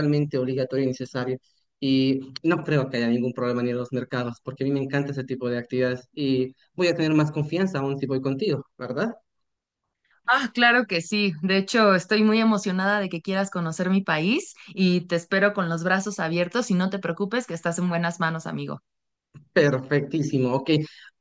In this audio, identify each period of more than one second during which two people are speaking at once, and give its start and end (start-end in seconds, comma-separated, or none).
none